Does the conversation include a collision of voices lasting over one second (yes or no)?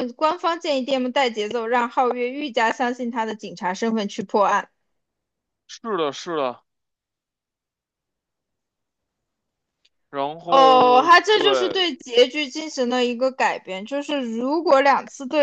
yes